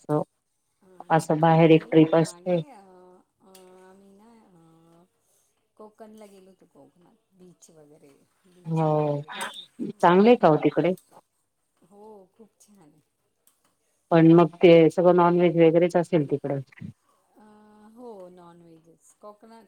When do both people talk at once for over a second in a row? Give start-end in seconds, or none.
1.2-2.5